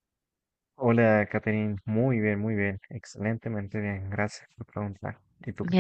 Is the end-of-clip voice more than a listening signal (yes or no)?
yes